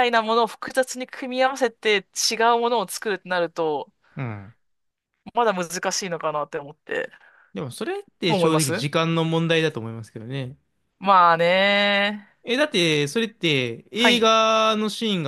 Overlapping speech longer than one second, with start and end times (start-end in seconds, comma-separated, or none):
none